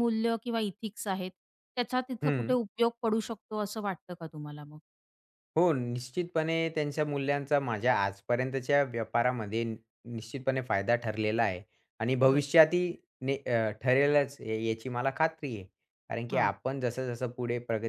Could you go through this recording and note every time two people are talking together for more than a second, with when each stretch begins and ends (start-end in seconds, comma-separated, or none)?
none